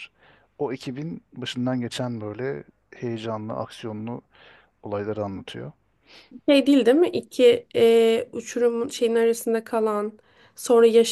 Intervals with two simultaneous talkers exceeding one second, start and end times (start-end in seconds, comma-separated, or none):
none